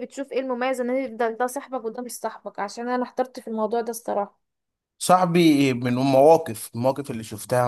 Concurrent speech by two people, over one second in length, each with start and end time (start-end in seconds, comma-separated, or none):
none